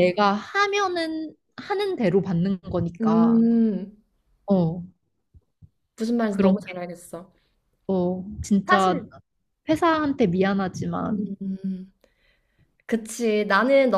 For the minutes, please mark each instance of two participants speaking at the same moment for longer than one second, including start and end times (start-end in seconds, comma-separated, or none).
none